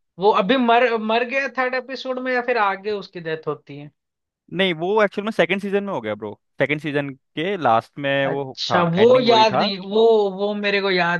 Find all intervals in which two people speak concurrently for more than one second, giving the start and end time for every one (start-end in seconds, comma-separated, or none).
8.3-9.7